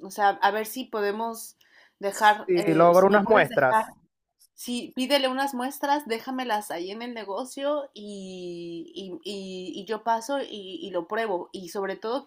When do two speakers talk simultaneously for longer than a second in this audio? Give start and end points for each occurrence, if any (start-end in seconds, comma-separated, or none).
2.1-3.8